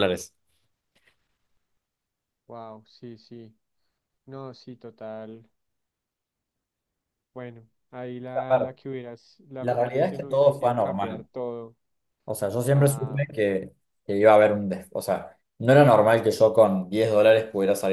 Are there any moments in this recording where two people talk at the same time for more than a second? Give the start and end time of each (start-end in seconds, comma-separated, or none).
9.6-11.3